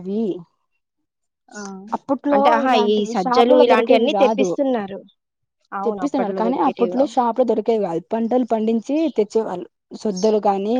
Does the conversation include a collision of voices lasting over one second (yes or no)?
yes